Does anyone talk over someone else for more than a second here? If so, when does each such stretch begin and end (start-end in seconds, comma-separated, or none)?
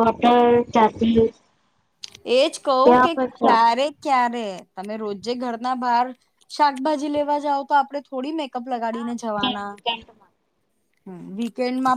8.9-10.3